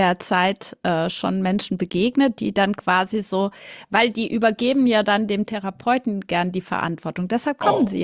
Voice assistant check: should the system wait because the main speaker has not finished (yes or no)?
no